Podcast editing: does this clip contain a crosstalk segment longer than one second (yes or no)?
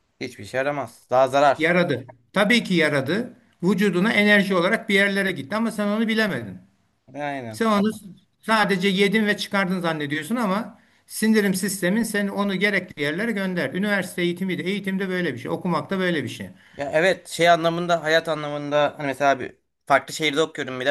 no